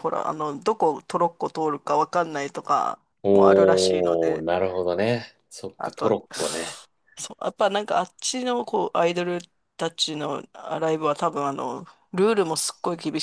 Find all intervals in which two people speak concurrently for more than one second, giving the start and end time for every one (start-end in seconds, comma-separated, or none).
3.2-4.5